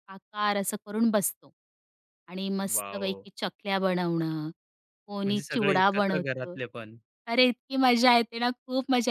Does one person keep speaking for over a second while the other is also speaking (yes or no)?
yes